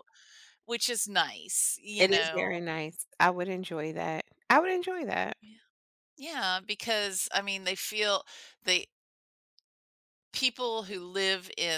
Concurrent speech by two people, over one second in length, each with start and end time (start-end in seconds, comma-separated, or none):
none